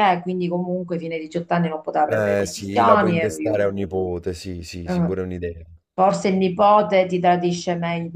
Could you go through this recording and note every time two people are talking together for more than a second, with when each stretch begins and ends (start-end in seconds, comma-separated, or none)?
2.0-3.6